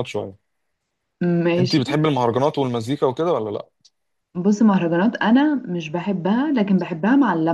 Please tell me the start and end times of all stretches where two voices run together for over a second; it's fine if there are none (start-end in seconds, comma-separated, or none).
none